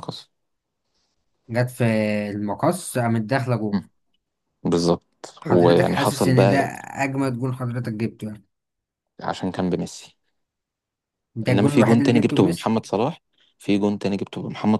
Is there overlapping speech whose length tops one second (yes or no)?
yes